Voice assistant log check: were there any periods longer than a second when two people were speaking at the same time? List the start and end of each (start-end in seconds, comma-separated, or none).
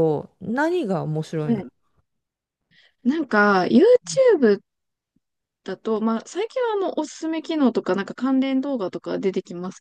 none